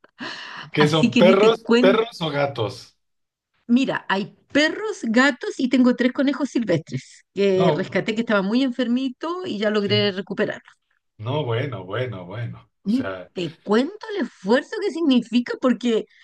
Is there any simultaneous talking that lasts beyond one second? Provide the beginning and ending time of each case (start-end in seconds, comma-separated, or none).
0.8-2.0